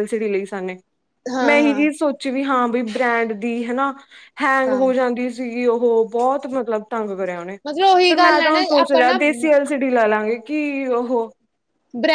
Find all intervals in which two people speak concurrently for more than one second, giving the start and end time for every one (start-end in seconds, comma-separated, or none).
7.7-9.2